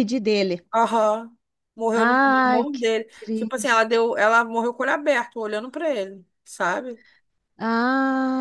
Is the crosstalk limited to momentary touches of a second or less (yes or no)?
no